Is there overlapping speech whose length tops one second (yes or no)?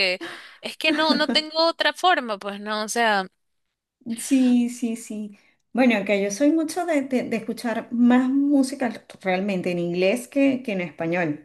no